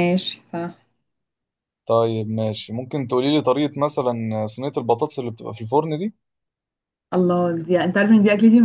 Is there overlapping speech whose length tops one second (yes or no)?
no